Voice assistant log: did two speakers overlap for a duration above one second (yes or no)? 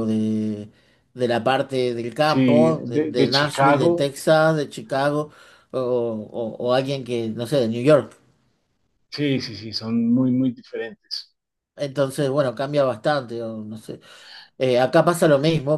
yes